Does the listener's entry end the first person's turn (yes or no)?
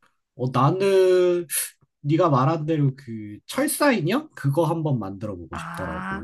yes